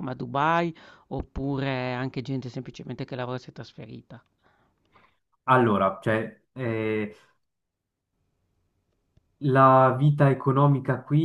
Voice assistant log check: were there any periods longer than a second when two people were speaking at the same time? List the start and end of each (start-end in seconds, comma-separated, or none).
none